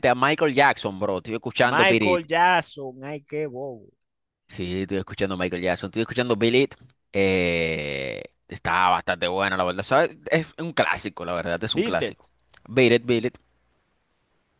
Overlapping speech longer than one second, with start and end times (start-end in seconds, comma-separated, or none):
none